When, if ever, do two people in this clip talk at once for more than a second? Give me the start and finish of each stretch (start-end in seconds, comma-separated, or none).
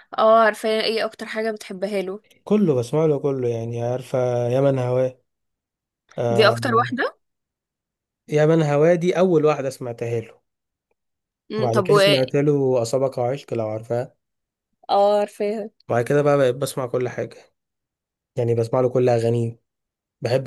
none